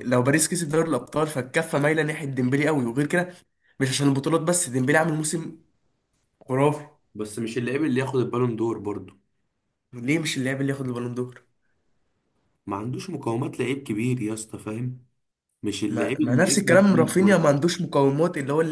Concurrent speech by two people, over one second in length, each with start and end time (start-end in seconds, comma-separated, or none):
15.9-17.5